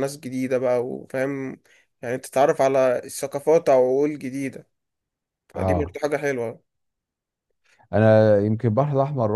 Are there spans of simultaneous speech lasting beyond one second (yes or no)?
no